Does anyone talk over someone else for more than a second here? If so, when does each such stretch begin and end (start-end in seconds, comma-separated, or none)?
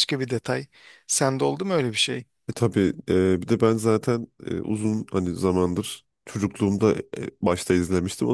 none